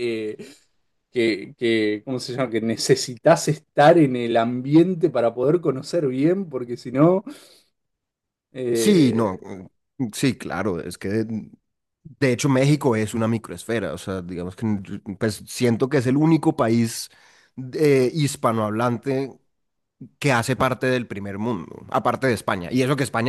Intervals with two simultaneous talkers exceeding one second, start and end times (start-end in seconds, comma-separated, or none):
none